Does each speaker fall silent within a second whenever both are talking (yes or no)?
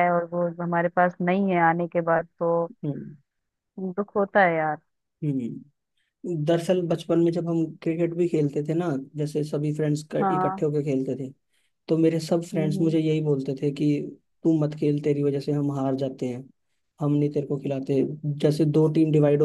yes